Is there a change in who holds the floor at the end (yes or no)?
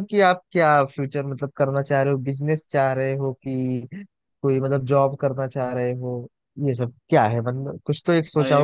yes